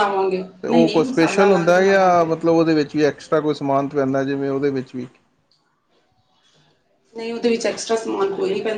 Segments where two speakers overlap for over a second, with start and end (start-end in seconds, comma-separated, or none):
0.6-2.3